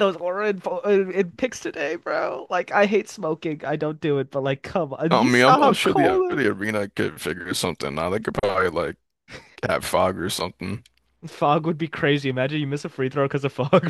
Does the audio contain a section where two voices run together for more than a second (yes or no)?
yes